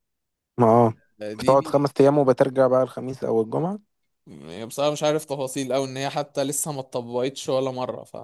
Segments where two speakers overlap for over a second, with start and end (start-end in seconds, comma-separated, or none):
none